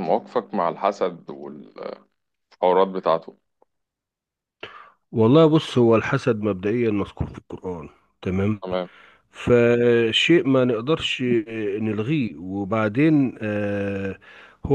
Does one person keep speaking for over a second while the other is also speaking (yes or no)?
no